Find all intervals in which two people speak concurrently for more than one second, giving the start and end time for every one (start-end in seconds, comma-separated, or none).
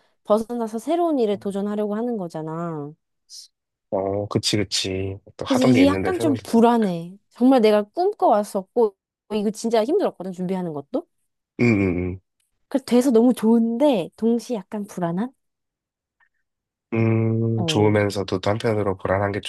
5.5-6.9